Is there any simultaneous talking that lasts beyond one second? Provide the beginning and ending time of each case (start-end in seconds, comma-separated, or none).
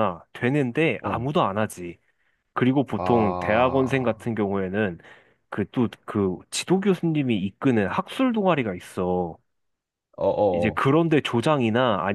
3.0-4.2